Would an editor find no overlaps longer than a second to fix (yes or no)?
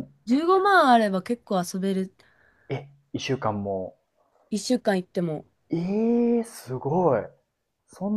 yes